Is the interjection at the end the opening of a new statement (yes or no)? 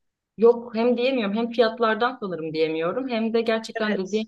no